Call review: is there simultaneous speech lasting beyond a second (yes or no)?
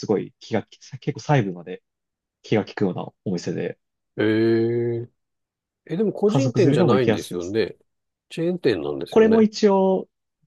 yes